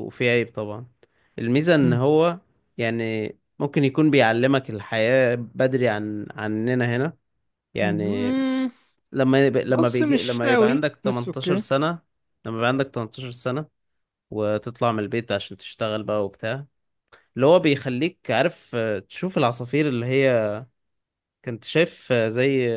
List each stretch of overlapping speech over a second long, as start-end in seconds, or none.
9.7-11.6